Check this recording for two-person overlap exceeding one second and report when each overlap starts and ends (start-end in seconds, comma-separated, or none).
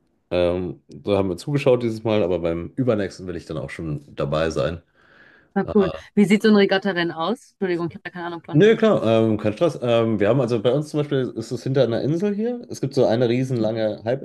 none